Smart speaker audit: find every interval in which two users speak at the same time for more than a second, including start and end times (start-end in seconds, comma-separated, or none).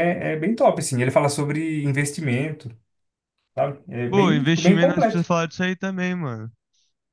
4.1-5.3